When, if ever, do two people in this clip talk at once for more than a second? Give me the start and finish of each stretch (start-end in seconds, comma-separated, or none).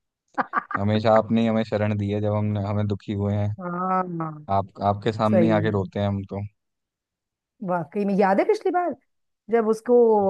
none